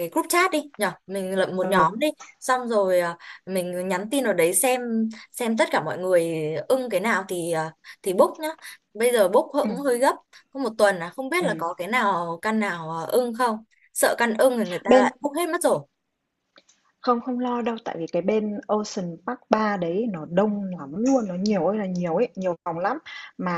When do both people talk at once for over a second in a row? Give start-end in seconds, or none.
none